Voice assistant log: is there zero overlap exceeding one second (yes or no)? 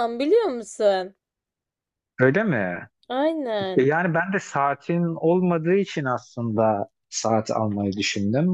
yes